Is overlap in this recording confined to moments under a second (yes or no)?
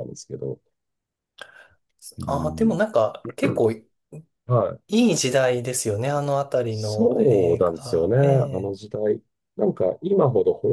no